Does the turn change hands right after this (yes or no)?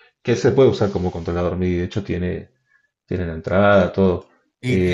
no